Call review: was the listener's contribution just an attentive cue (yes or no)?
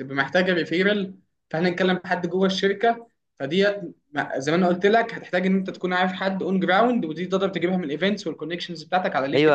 no